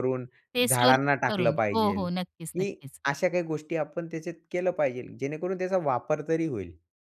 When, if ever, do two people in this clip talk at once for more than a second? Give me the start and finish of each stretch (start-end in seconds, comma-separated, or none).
0.7-3.0